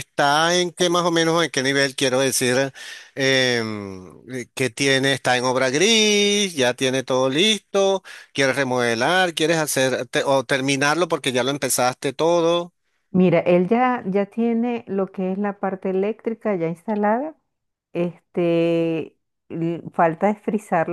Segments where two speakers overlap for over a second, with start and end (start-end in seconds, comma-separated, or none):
none